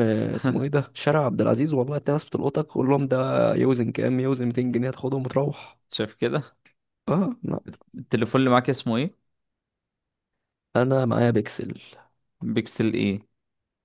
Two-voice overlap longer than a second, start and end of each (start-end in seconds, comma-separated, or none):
none